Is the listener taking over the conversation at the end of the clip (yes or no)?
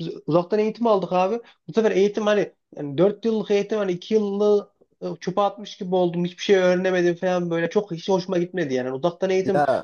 no